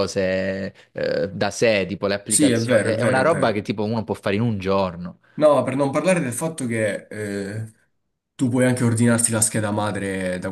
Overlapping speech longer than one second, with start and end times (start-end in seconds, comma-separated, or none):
2.2-3.7